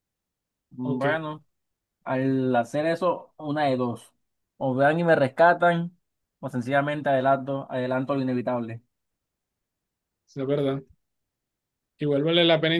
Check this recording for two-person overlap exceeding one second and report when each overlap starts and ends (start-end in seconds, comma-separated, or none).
none